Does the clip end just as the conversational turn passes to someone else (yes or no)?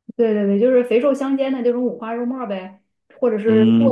yes